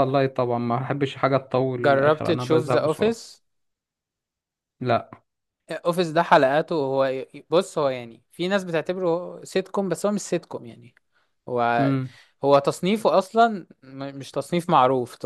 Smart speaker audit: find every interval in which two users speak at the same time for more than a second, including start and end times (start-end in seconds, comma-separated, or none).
1.8-3.2